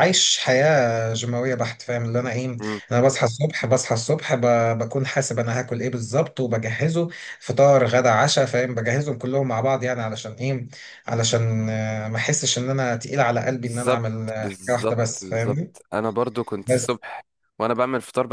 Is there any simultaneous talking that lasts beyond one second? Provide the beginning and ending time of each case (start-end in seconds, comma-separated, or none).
13.6-15.7